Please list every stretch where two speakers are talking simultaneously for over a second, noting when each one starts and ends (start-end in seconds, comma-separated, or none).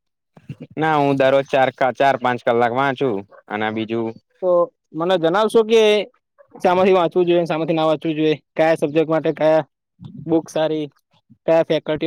none